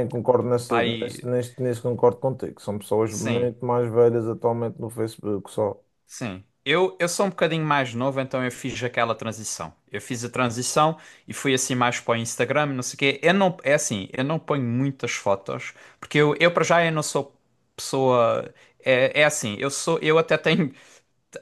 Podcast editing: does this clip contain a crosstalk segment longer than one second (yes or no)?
no